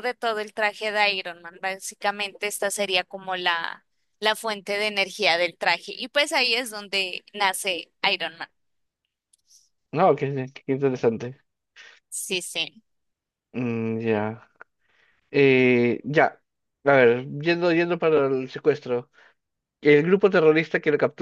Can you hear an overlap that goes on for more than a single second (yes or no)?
no